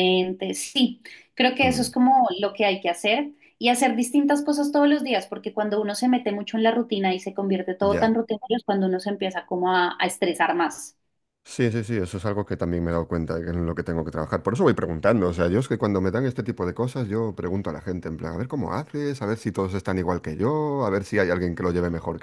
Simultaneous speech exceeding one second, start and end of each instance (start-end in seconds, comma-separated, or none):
none